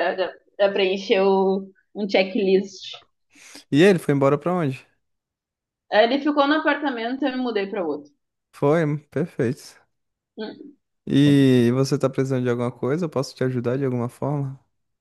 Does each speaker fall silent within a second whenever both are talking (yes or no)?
yes